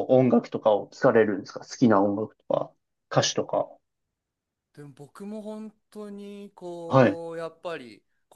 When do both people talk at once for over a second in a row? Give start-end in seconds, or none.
none